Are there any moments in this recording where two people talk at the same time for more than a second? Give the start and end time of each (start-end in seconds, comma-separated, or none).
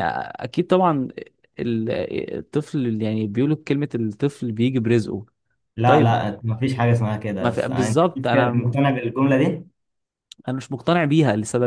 7.4-8.7